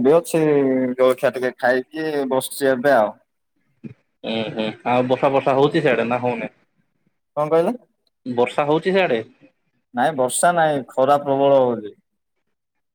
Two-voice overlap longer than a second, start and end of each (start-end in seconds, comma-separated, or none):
none